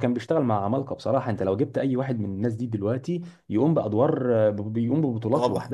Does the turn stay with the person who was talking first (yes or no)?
no